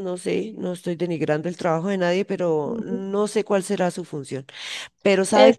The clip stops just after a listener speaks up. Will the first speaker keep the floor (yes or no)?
no